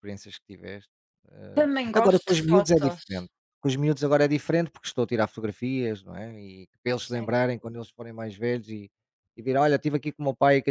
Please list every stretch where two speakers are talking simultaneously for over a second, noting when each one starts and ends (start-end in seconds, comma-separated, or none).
1.5-3.0